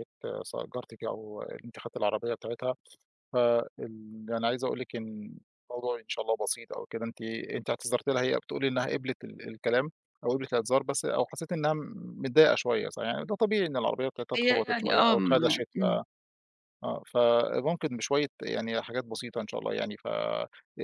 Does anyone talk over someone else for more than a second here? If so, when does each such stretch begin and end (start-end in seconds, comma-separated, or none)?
14.3-16.0